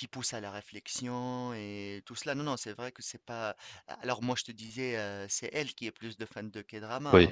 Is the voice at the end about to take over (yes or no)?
no